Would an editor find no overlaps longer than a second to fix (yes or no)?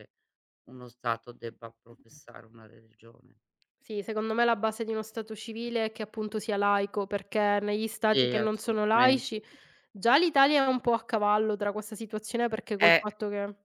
no